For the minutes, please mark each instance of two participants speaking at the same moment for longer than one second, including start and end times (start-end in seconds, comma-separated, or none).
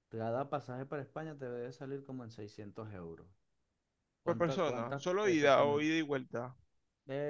4.2-5.9